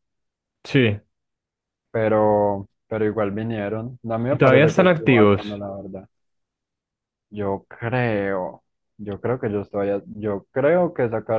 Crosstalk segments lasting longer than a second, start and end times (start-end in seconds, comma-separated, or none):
4.3-5.6